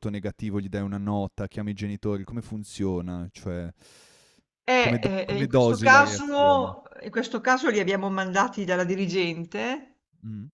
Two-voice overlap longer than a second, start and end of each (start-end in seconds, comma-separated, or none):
4.8-6.2